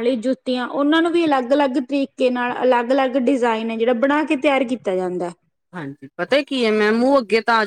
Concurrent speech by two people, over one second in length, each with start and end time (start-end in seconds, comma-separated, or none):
none